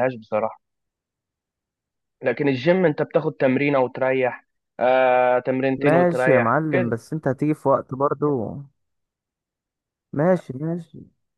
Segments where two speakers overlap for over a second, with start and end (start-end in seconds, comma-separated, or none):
5.8-7.0